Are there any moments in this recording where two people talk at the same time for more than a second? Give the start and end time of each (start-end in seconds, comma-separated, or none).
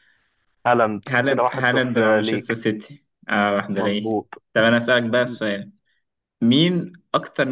1.1-2.6